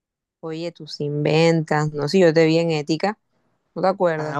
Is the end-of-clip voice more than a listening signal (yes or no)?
yes